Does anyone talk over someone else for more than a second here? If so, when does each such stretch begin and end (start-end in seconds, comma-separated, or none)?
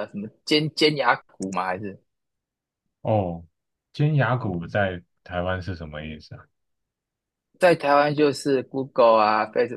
none